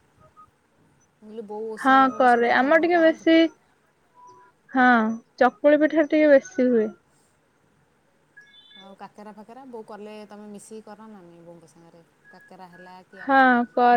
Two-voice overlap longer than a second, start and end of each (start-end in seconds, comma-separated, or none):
1.8-3.4